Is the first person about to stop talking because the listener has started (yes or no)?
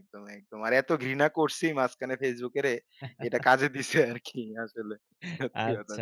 yes